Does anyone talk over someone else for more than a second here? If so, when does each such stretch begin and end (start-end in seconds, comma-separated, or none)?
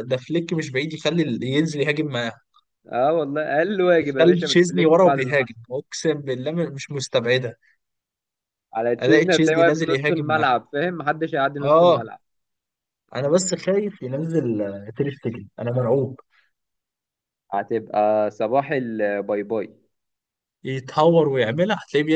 4.0-5.6, 9.0-10.4